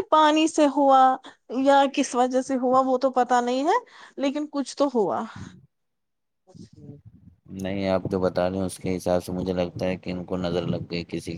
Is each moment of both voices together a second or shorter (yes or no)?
yes